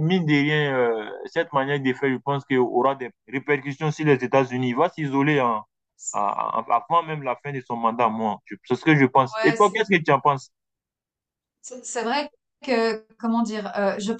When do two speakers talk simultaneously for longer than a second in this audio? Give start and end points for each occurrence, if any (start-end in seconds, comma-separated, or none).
none